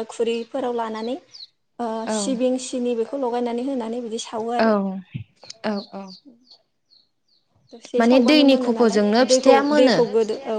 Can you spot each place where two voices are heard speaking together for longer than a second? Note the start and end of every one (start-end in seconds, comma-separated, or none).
8.0-10.0